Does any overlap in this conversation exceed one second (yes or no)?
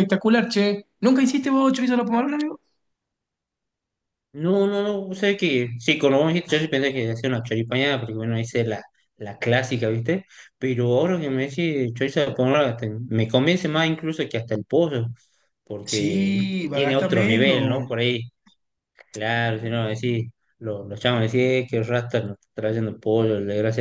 yes